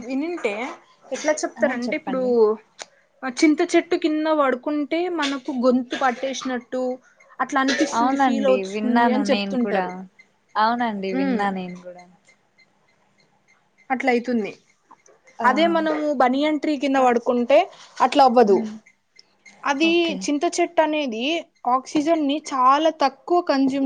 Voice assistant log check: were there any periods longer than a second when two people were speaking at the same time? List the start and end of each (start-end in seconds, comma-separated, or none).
8.0-9.8